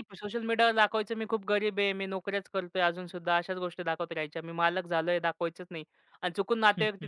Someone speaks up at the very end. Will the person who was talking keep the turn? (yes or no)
yes